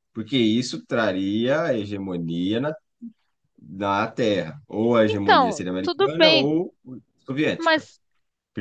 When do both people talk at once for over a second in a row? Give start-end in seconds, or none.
5.1-6.5